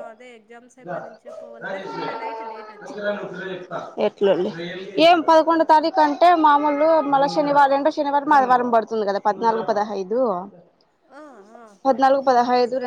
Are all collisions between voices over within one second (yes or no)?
yes